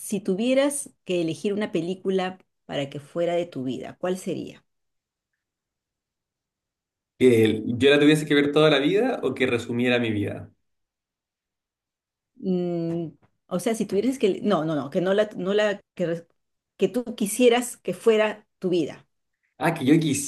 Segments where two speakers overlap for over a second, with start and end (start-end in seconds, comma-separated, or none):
none